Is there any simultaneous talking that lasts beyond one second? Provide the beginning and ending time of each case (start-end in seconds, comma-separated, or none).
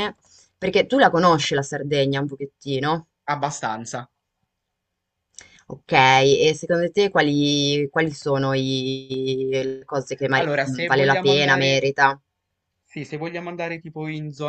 10.3-11.8